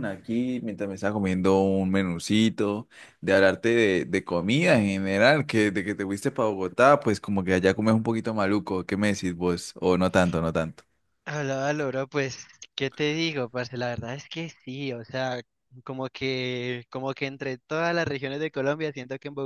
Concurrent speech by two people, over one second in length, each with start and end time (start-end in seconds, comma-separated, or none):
none